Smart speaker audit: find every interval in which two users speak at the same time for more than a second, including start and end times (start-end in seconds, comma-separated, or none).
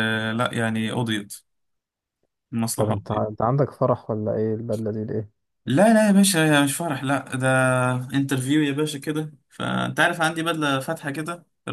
none